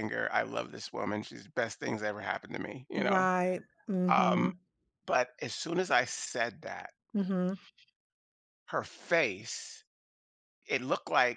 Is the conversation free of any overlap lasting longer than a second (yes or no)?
yes